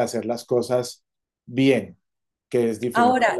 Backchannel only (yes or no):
no